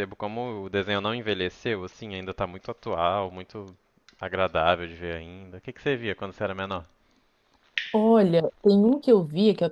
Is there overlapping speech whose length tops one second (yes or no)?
no